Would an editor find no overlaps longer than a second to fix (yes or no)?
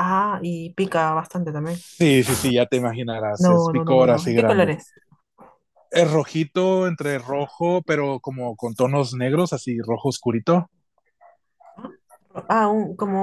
no